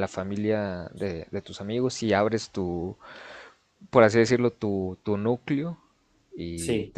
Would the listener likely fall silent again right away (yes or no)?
yes